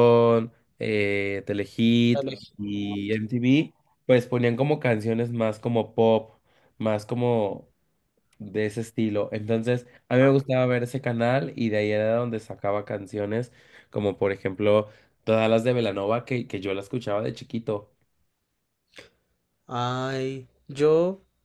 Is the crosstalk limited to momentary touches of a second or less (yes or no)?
yes